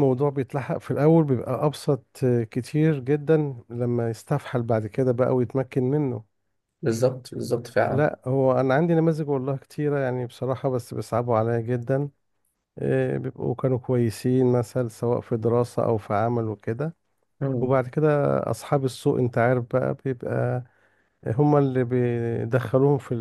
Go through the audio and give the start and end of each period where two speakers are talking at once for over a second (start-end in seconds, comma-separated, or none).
none